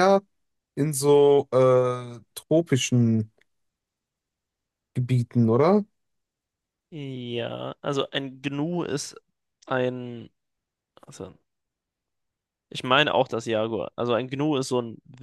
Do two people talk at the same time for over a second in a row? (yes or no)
no